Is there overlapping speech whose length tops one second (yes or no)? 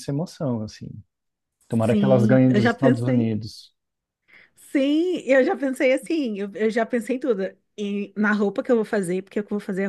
yes